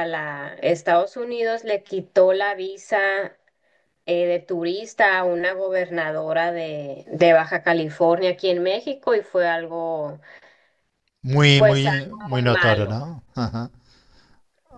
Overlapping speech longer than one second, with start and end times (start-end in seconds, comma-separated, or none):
11.5-12.9